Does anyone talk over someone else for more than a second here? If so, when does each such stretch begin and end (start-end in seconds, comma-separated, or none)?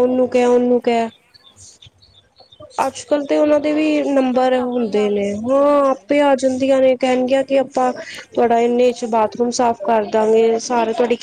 3.6-5.9